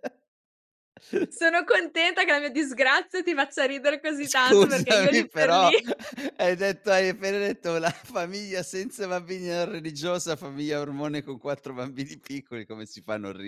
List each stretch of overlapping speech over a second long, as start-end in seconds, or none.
4.2-5.7